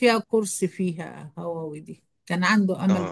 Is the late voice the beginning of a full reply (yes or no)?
no